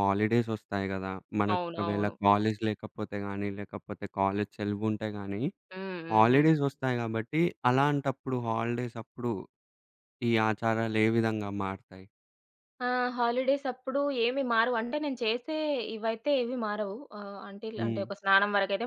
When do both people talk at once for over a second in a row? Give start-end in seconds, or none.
none